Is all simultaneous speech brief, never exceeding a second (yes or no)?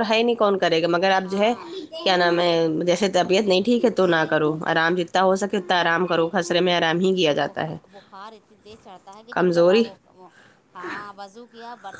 yes